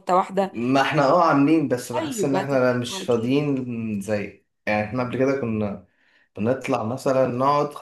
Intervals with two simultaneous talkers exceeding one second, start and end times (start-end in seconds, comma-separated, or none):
1.9-3.3